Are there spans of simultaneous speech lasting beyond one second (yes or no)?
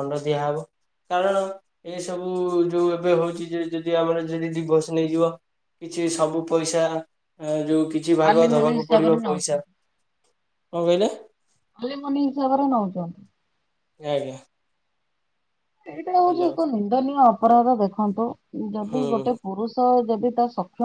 yes